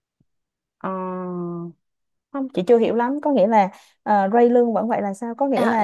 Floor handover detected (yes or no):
yes